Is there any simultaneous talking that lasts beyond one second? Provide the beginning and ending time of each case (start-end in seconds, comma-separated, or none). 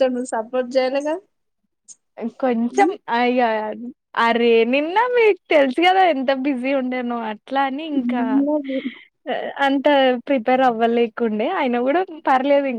none